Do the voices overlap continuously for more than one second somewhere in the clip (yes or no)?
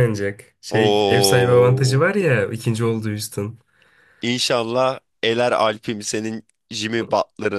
yes